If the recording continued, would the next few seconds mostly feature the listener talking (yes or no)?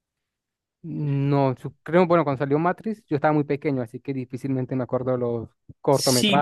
yes